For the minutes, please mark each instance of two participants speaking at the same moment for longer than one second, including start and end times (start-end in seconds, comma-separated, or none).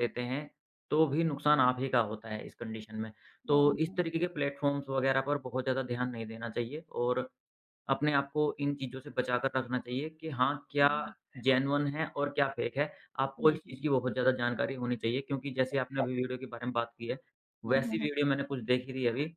none